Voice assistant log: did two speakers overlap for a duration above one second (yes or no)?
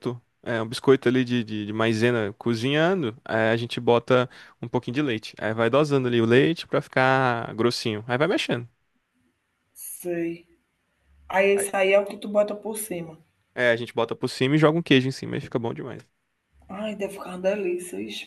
no